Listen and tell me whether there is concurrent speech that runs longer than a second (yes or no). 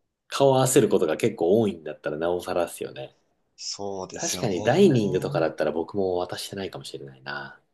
yes